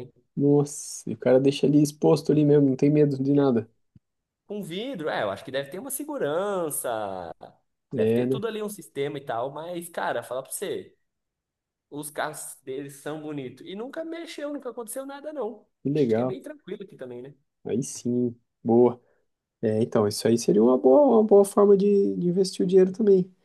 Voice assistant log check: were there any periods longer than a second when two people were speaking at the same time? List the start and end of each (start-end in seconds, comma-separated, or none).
none